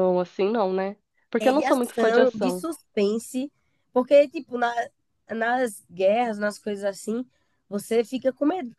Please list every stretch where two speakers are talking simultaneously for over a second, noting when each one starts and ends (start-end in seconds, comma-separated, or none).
1.4-2.6